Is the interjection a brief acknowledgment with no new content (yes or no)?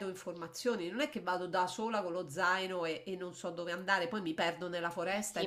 no